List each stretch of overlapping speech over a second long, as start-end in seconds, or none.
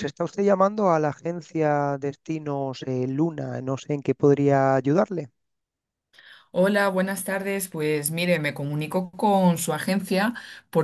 none